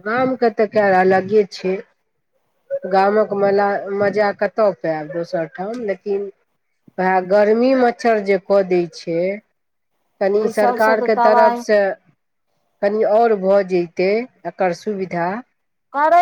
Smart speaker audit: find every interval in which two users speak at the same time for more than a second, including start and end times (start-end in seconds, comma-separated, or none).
10.3-11.6